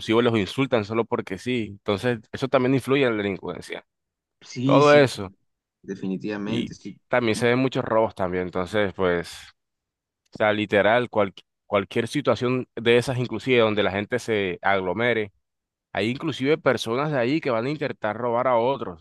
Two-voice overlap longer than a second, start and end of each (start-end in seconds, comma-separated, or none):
none